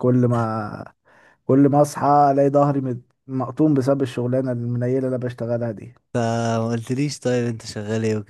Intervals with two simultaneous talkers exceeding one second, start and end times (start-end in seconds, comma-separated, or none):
none